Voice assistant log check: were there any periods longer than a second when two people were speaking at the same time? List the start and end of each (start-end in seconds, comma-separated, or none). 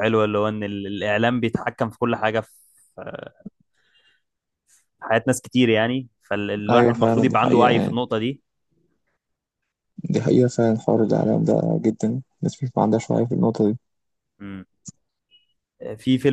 6.7-8.0